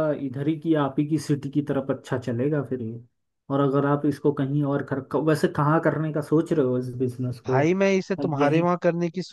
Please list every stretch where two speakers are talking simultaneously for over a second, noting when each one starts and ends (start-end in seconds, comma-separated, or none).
none